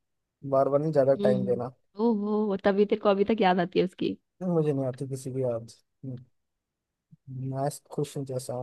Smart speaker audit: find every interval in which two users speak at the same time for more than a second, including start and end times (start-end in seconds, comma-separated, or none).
none